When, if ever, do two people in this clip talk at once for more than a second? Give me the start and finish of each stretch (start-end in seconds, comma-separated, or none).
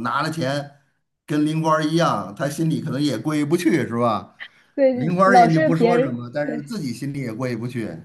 4.9-6.6